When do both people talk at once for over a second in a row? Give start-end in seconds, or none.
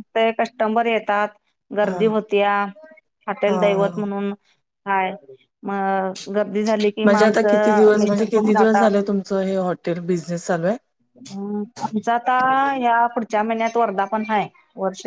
7.0-8.9